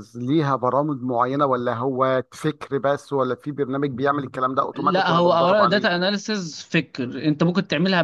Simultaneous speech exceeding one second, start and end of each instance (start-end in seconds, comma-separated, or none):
4.7-6.0